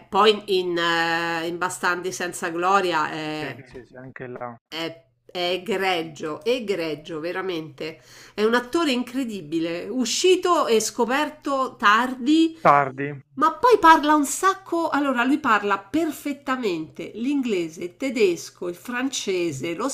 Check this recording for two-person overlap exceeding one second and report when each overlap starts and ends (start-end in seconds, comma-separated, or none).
none